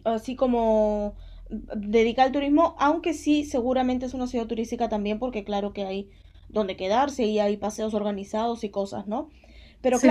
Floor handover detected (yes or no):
no